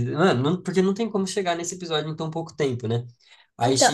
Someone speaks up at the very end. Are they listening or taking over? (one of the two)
taking over